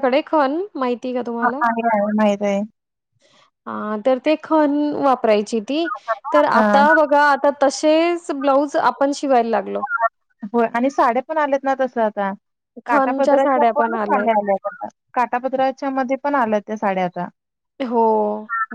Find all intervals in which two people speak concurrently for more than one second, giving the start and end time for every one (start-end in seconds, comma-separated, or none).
12.9-14.3